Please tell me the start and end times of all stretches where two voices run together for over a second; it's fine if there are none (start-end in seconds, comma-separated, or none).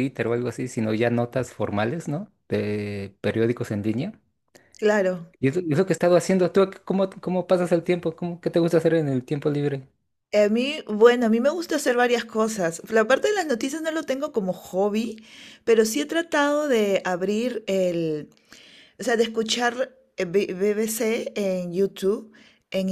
none